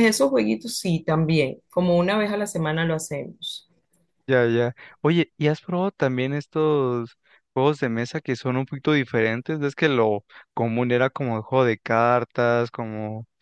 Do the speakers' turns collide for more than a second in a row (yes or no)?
no